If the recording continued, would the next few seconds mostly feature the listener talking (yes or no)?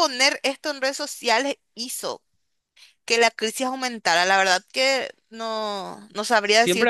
yes